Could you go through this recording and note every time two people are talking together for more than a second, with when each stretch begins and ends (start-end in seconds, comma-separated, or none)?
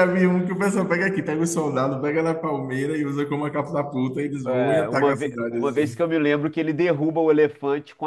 4.5-6.0